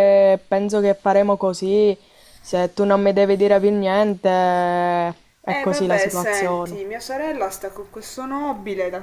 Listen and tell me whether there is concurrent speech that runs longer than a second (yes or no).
yes